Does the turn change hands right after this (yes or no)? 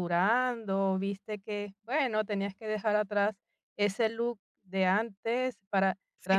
no